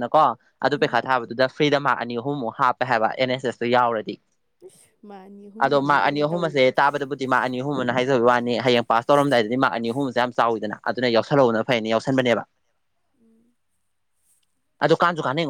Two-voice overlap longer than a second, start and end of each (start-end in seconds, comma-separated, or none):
5.6-6.8